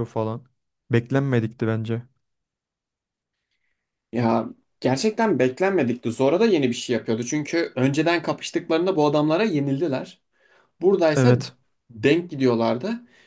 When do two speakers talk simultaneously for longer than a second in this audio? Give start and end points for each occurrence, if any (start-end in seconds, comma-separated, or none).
none